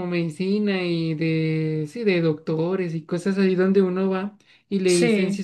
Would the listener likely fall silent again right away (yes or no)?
yes